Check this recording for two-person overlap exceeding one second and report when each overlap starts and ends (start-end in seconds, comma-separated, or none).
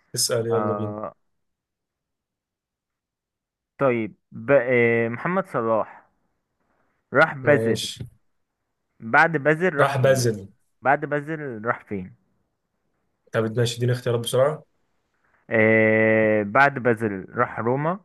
none